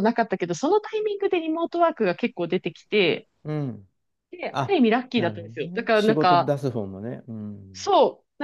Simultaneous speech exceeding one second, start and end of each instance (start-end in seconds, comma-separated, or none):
4.5-6.5